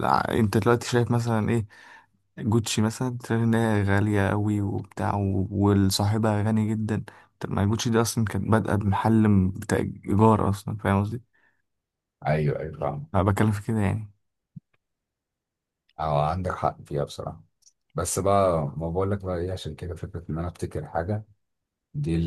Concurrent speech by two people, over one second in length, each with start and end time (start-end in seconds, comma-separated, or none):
none